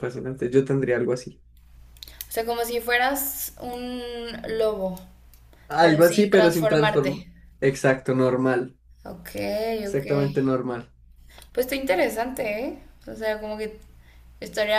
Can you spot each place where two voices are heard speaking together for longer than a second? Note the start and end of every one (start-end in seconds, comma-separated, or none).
5.8-7.2